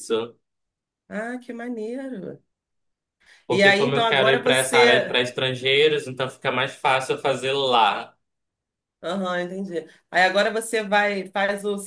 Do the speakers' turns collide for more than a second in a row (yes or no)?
yes